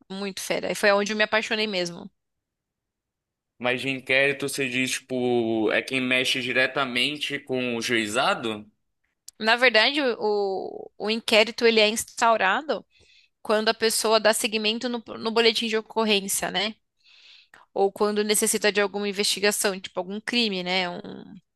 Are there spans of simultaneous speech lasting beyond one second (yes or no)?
no